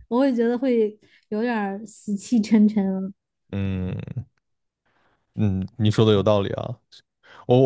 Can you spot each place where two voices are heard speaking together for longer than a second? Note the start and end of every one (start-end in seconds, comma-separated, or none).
none